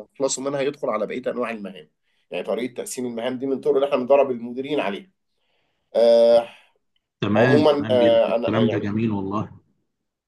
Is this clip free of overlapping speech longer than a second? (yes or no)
no